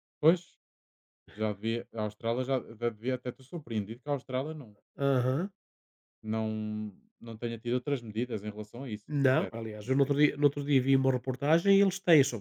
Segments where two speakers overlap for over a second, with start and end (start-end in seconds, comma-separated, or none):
9.1-10.5